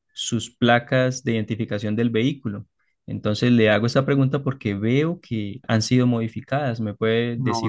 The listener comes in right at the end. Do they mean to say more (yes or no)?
yes